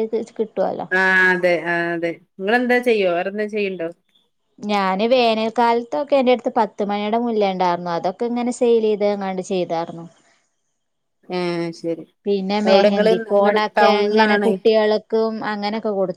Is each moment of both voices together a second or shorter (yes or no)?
no